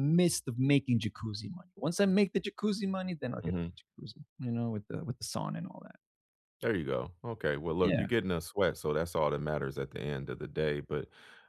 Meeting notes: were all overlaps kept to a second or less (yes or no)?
yes